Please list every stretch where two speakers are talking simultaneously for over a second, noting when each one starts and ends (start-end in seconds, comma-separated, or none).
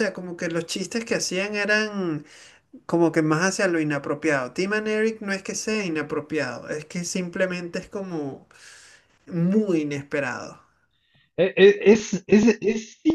none